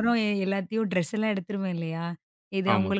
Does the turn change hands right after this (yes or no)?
no